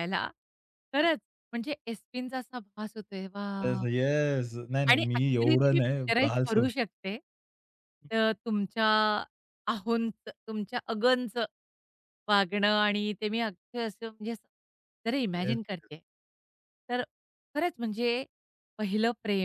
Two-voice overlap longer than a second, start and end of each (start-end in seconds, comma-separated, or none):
4.9-6.8